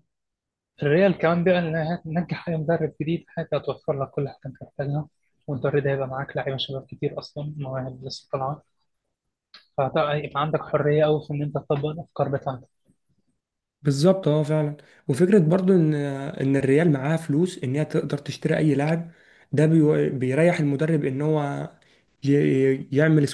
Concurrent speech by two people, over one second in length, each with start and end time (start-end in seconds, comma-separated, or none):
none